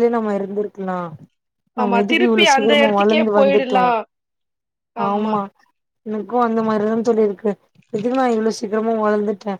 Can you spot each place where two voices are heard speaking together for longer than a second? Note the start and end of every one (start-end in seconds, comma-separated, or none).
1.8-3.8